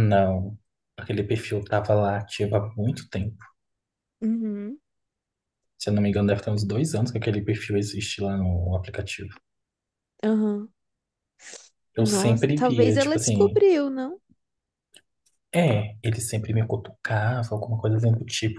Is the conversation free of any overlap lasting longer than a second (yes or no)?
no